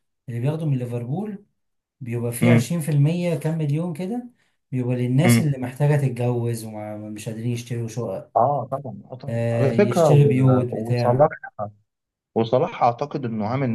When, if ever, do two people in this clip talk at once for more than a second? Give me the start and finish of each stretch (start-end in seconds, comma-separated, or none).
9.3-11.3